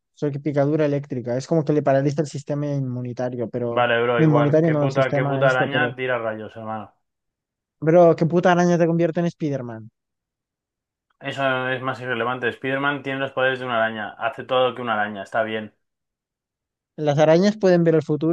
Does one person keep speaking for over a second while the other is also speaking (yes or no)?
yes